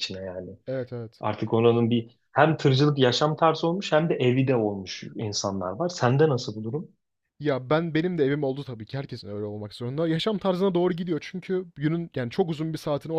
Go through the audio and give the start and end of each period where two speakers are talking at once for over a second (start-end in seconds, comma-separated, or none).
none